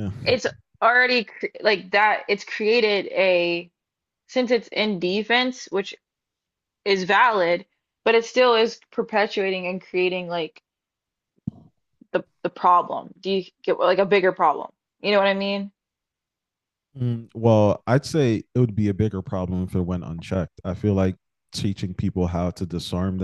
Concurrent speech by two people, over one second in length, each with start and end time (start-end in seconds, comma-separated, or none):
none